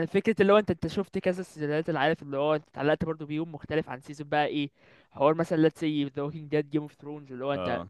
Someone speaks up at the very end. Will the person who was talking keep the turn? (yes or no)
yes